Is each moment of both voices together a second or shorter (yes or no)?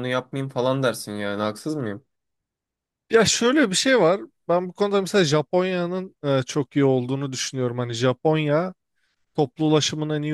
yes